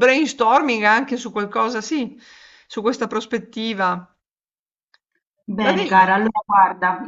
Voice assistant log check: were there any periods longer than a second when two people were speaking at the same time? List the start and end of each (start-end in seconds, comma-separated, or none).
none